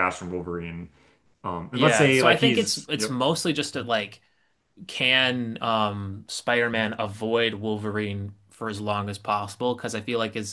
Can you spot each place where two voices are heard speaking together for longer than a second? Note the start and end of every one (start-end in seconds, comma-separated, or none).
1.7-3.2